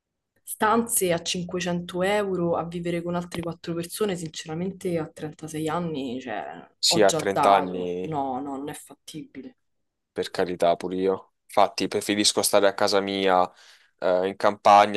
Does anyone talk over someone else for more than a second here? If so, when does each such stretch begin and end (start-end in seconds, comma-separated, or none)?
6.9-8.2